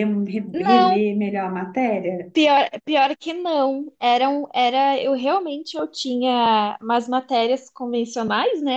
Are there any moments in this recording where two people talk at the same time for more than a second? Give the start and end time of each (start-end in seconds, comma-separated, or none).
none